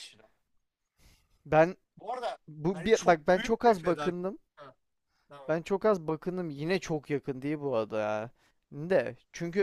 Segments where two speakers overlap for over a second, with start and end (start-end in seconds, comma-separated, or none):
2.5-4.2